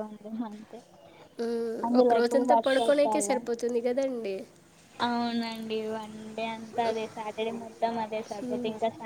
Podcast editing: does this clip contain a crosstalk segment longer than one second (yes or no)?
yes